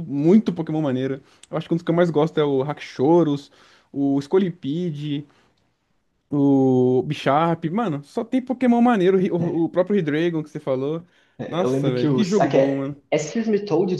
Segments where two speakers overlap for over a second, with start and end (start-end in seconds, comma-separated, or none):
11.5-13.0